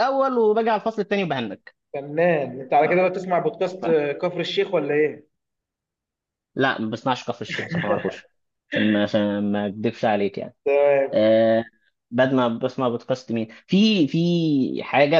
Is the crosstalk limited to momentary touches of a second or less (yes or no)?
yes